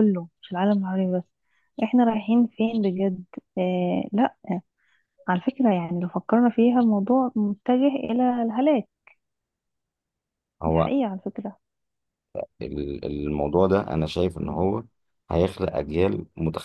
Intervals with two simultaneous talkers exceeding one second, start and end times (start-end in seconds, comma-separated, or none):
none